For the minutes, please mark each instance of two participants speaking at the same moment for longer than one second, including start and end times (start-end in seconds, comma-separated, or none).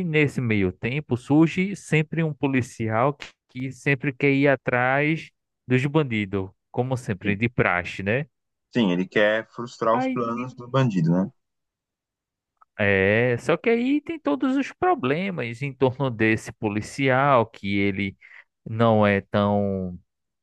none